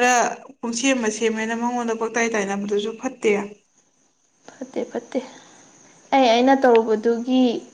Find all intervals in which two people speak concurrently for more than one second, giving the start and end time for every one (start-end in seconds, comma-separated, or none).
none